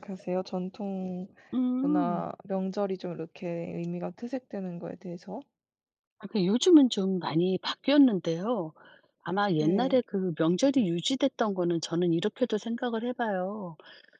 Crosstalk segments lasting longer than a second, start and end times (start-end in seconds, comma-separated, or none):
none